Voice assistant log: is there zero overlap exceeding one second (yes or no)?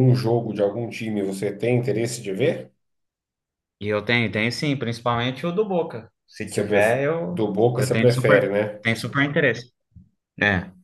no